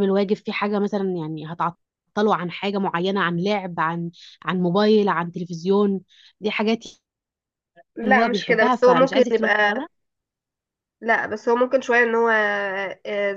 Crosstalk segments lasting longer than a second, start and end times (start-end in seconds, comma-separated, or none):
8.0-9.8